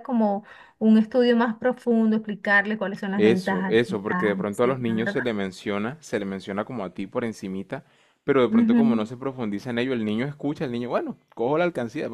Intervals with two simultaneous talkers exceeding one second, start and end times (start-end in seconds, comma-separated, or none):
3.1-5.1